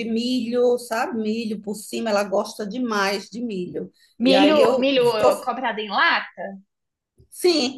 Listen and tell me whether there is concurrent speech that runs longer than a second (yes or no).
yes